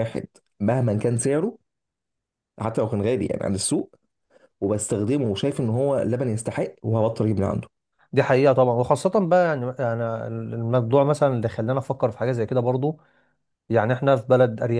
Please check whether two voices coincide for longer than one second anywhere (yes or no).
no